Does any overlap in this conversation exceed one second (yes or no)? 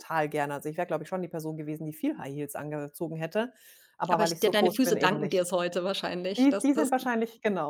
yes